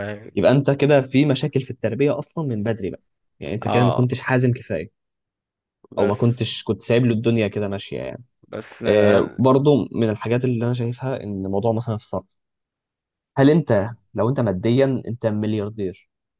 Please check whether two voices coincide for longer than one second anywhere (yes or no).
no